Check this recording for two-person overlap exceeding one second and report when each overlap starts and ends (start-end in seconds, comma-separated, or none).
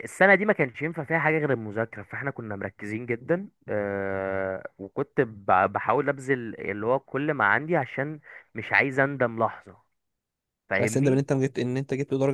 none